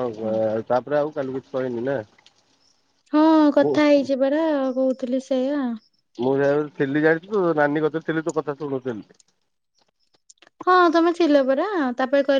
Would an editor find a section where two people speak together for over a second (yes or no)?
no